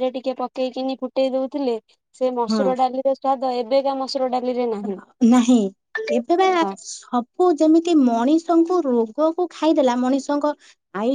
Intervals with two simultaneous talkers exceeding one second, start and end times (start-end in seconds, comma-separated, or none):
none